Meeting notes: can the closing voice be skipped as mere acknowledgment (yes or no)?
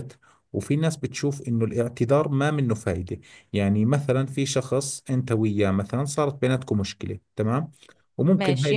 yes